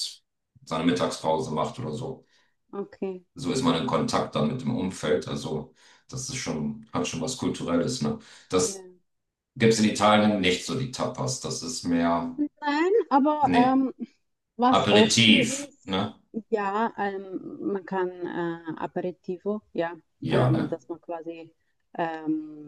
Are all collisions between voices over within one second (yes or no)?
no